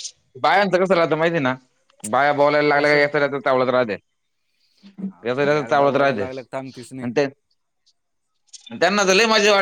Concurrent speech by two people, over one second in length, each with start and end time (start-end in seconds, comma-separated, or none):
5.1-7.1